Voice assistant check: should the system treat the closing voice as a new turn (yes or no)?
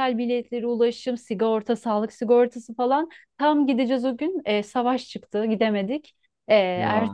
no